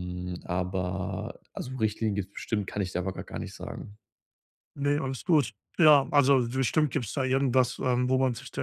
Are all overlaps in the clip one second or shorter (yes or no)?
yes